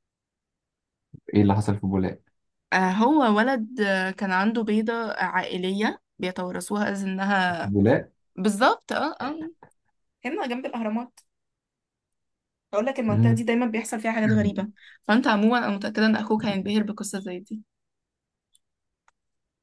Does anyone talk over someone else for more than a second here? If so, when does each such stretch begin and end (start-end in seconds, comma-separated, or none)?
none